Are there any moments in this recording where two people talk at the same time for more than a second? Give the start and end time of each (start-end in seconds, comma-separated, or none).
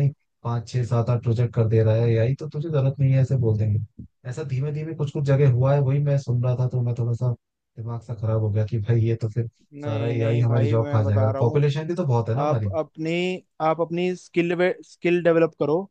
9.8-11.7